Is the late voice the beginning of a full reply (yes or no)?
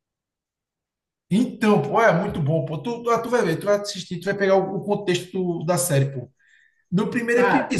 no